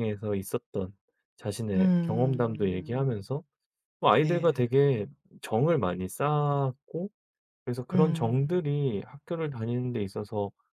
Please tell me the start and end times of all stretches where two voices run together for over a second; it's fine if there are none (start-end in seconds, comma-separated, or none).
1.7-3.2